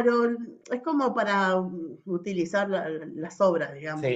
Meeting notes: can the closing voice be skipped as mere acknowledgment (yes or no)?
no